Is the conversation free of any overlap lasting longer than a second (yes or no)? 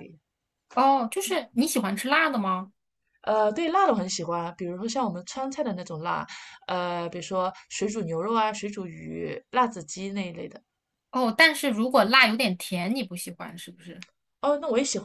yes